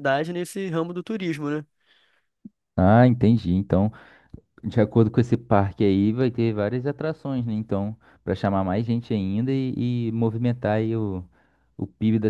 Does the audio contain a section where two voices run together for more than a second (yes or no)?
no